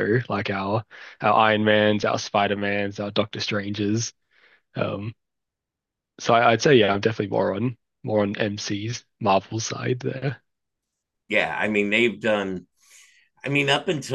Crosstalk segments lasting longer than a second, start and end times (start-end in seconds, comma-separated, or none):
none